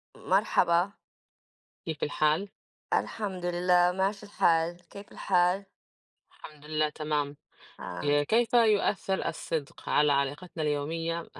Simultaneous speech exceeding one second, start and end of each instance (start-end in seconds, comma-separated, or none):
none